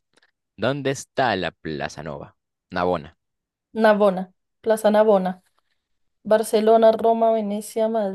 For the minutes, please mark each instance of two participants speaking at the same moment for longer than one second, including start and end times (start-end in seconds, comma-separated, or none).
none